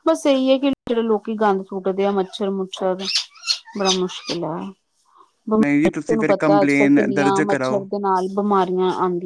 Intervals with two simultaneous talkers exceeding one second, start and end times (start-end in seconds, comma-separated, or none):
5.6-7.8